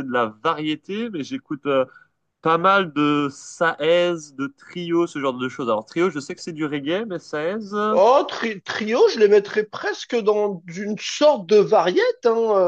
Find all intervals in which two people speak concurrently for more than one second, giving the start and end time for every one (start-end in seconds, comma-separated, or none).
none